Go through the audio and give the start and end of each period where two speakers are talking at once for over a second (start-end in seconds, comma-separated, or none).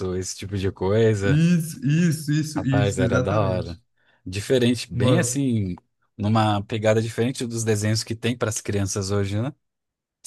2.6-3.8